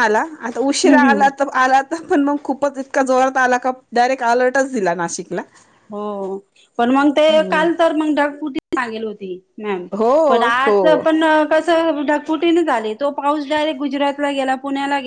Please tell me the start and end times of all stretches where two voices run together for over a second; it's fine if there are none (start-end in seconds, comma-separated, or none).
none